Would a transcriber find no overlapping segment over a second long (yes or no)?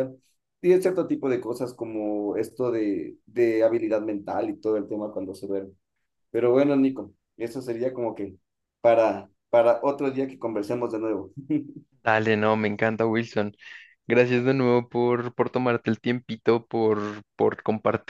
yes